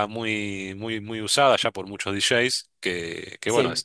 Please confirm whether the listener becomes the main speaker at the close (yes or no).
no